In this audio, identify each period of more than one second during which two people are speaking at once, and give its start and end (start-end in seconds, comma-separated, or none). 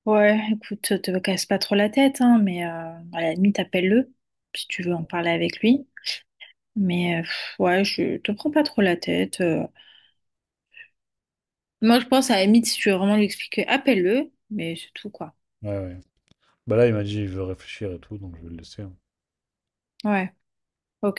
none